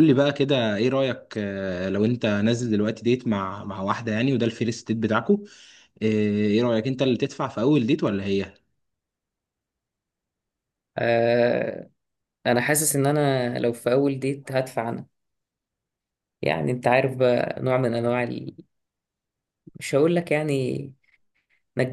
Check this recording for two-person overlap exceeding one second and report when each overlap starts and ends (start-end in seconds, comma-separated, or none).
none